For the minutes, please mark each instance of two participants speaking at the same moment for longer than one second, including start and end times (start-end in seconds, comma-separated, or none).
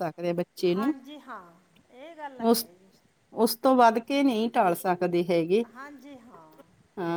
none